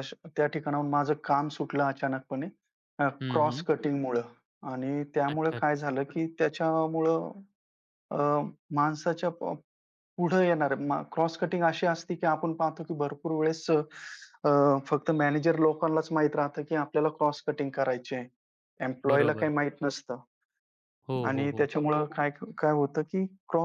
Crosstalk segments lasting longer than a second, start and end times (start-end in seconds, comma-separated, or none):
none